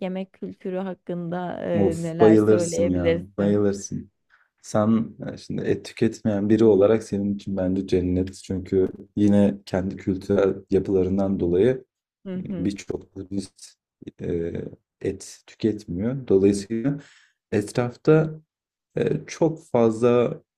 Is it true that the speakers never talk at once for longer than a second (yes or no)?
no